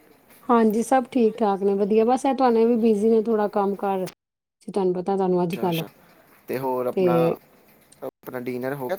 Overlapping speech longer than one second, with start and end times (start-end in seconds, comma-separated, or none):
none